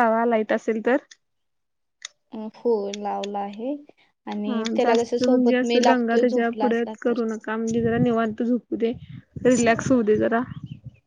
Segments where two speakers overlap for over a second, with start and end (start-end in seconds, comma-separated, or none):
4.5-7.2